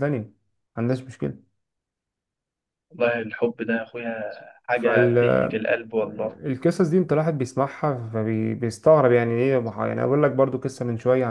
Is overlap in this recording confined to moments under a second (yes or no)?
yes